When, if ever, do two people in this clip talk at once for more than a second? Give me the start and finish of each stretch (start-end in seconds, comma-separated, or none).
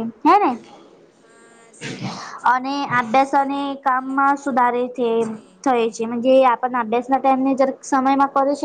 2.5-5.1